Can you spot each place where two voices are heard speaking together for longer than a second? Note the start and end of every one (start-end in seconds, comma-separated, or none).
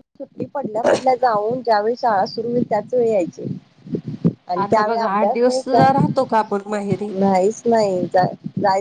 4.6-7.0